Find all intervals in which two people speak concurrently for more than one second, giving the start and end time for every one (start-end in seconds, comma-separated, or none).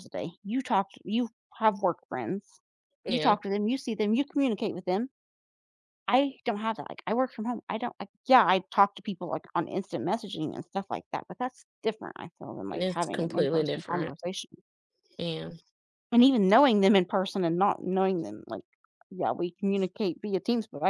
12.7-14.2